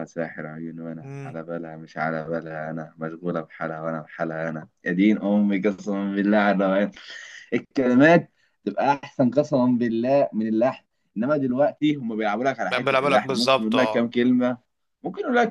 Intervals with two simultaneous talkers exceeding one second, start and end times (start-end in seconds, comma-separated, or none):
12.7-14.1